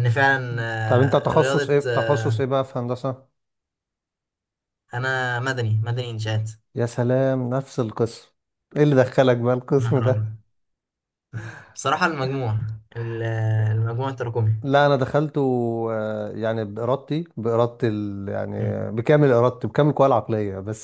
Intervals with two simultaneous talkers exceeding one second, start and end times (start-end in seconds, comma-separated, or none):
0.8-2.2